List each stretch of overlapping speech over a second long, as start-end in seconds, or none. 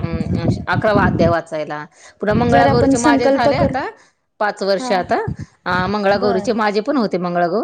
2.5-3.7